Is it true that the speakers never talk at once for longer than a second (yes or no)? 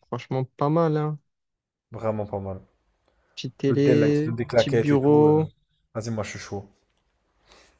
no